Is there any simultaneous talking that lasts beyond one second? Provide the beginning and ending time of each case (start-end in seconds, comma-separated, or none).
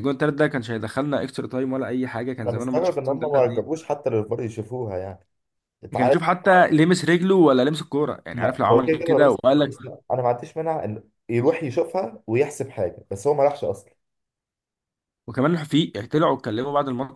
2.5-3.7, 8.3-9.7